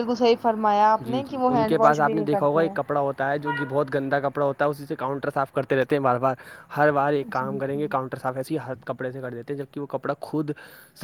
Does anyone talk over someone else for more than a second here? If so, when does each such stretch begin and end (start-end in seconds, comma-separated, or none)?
none